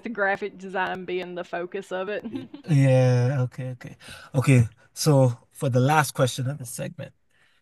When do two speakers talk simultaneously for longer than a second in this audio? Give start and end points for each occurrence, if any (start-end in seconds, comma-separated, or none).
none